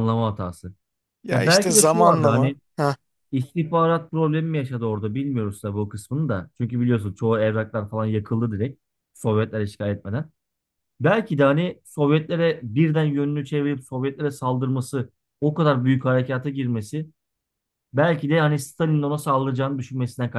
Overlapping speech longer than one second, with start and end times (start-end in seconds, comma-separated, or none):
1.3-2.6